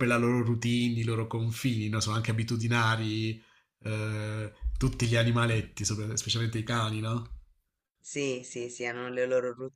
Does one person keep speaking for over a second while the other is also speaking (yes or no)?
no